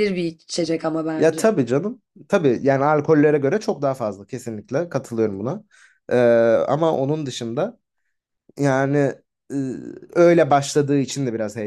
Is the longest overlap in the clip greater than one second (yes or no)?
no